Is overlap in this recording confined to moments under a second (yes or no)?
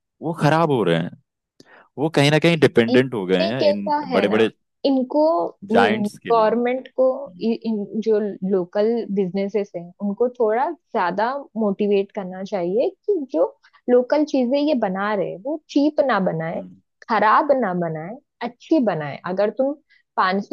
no